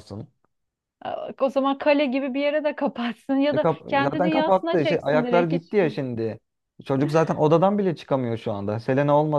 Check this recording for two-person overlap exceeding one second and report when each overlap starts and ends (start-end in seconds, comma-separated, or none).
3.5-5.8